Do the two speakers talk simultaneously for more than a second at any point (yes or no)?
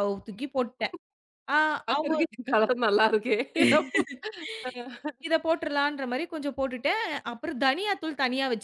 no